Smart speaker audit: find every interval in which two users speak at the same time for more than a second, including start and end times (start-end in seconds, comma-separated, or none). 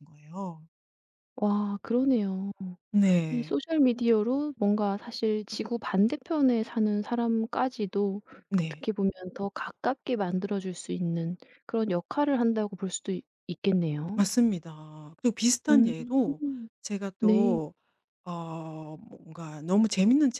none